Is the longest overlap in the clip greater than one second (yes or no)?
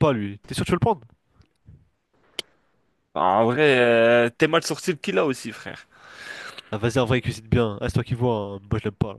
no